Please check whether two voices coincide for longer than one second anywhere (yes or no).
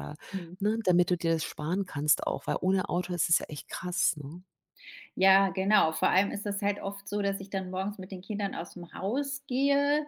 no